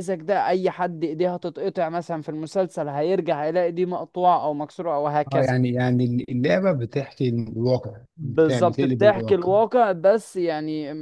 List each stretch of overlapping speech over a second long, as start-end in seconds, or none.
8.2-9.5